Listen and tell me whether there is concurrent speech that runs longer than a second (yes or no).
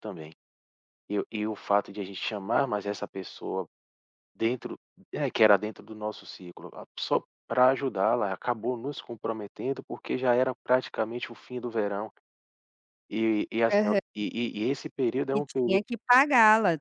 no